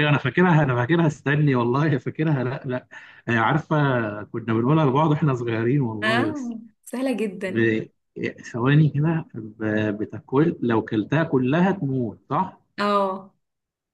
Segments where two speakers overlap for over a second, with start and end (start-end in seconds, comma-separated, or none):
none